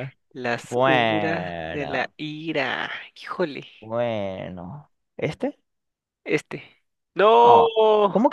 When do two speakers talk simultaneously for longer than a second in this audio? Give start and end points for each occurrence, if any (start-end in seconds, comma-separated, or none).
0.7-2.1